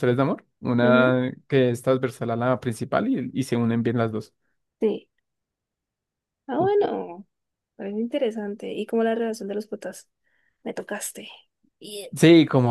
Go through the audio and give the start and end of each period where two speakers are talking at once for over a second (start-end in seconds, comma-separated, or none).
none